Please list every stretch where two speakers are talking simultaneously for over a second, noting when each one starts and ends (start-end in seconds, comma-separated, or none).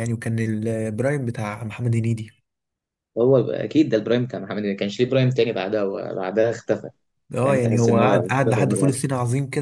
7.4-8.9